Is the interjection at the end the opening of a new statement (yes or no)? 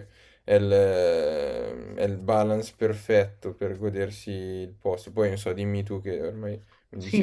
yes